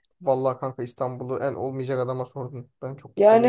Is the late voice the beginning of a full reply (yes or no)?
yes